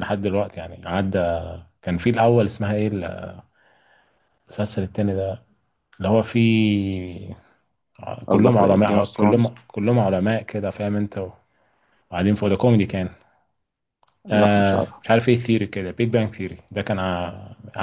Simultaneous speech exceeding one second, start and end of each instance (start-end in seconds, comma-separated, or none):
8.3-9.6